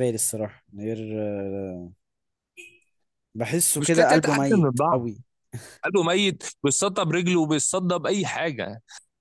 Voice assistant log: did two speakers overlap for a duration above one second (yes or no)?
yes